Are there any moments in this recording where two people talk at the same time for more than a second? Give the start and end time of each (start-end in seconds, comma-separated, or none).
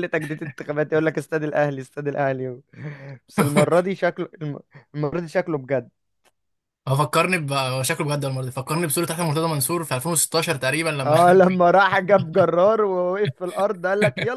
none